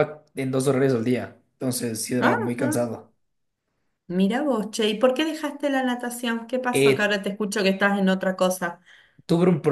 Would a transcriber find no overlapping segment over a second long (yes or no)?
yes